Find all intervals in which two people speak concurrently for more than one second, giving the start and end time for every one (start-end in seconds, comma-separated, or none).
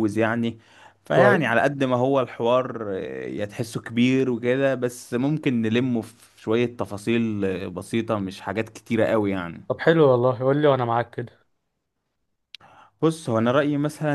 none